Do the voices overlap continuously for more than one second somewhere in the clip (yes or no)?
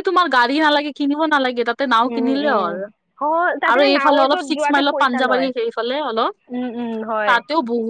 yes